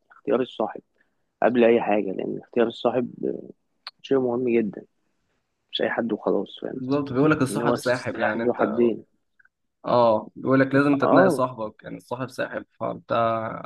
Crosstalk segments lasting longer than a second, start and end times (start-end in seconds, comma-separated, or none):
7.5-8.7